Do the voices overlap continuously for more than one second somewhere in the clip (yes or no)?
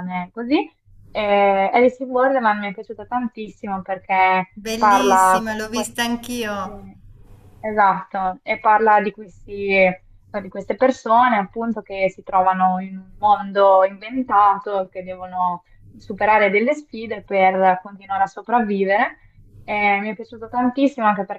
yes